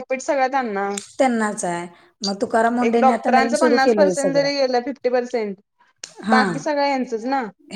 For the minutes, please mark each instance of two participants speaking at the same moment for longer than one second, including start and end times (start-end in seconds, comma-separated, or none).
2.9-4.5